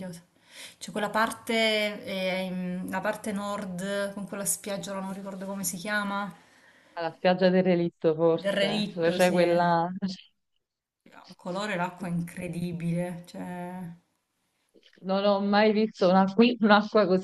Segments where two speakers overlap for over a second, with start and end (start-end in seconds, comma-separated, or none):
8.3-9.6